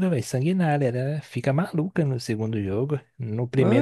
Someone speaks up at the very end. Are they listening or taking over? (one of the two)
taking over